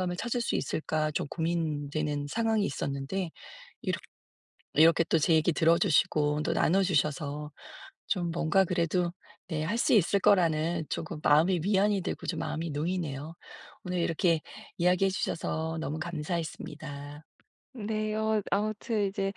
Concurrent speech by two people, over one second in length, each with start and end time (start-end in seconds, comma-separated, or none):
none